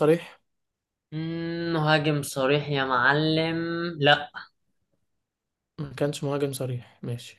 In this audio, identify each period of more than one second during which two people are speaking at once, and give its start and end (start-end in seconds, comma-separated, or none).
none